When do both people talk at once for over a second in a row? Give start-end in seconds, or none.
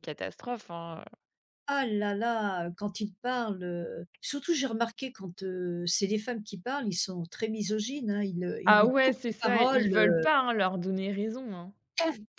8.7-10.2